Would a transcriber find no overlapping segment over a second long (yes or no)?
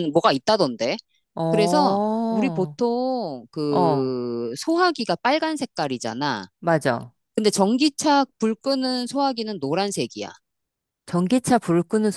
no